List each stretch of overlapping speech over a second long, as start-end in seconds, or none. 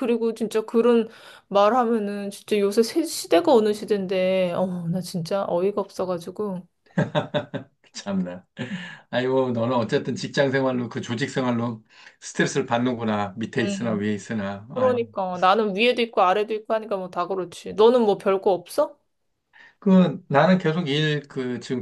none